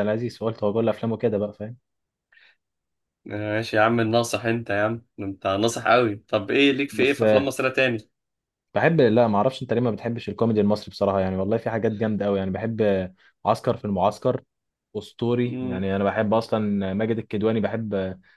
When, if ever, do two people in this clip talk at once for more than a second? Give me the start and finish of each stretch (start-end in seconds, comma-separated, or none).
none